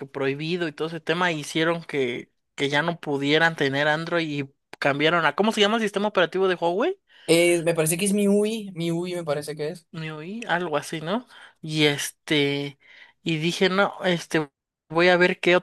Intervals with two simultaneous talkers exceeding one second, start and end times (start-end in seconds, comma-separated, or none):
none